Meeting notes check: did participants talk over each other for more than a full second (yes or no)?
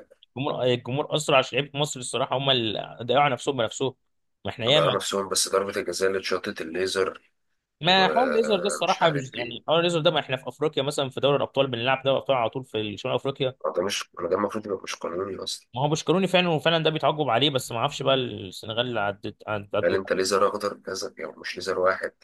yes